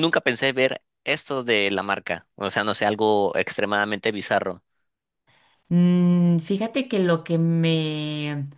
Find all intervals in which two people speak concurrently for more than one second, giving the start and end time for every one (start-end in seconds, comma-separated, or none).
none